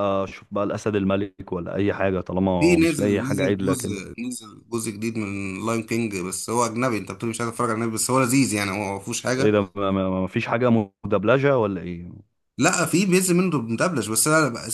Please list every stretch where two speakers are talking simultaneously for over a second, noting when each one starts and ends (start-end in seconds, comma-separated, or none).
2.6-4.0